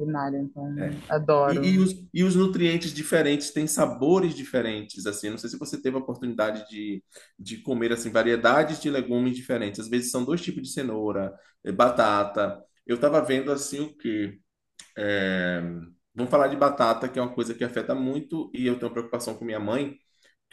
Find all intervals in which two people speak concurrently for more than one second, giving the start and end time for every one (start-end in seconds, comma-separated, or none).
none